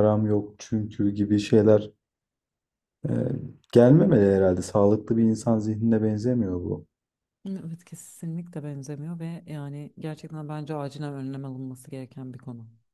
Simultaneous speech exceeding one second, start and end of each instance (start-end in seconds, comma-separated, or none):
none